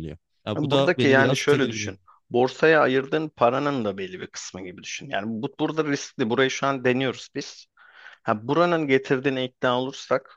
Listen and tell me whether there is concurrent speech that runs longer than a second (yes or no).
yes